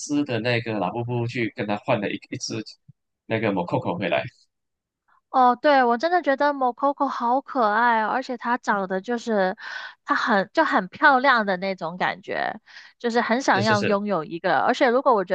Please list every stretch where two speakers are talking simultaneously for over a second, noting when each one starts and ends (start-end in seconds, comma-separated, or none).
none